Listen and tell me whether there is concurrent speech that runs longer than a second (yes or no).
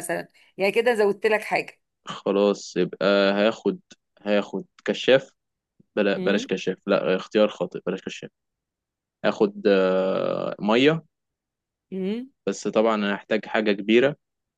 no